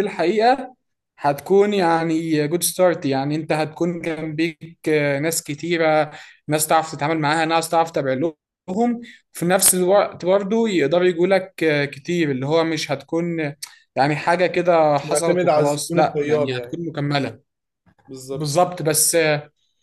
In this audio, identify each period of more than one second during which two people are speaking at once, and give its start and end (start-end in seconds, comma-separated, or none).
15.0-16.8